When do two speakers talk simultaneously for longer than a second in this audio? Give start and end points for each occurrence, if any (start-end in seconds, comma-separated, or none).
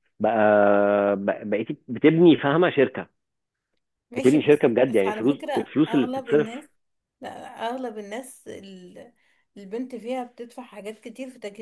4.2-6.5